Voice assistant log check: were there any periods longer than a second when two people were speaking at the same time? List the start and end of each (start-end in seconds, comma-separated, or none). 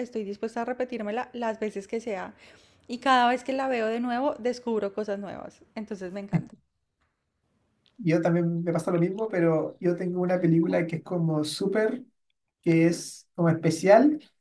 none